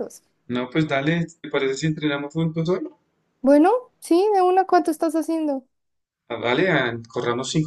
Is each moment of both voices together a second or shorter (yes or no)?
yes